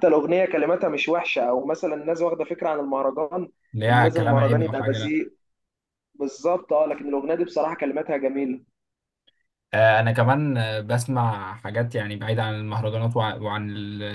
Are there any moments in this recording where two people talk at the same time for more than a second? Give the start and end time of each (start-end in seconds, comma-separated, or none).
3.9-5.2